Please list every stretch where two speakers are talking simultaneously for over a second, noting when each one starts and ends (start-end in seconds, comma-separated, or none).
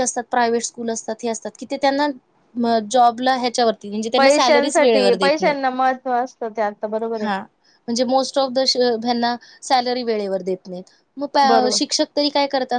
4.2-5.5